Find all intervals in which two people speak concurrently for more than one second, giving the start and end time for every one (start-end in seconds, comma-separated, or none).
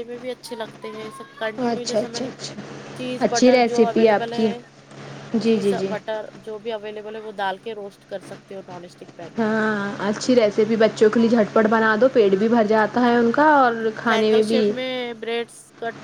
3.2-4.5